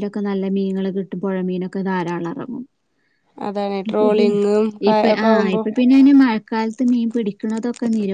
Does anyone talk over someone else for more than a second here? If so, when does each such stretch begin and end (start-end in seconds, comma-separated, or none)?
none